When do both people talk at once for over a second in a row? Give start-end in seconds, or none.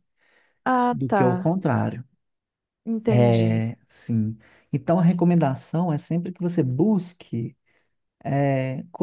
none